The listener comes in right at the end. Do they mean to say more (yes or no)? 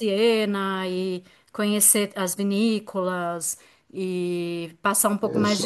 no